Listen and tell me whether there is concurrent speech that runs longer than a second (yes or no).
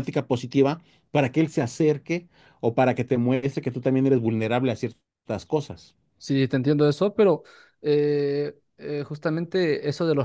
no